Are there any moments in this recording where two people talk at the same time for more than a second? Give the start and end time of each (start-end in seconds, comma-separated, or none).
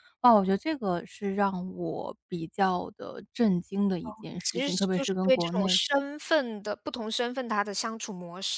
4.4-5.8